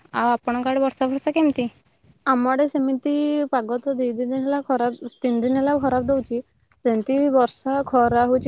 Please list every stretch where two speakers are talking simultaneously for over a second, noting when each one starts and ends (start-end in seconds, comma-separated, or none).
none